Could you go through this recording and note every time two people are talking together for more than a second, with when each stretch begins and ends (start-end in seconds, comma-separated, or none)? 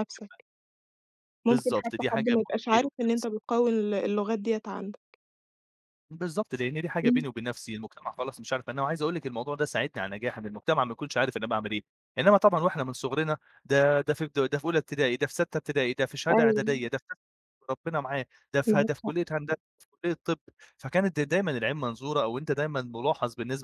1.5-2.9